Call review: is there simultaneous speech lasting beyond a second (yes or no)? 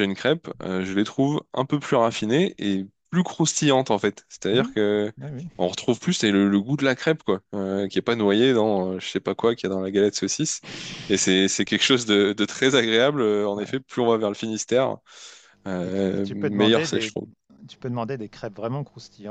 yes